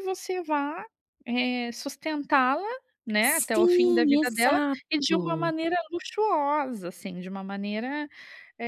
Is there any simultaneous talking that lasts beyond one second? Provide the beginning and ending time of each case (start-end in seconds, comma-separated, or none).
3.3-5.5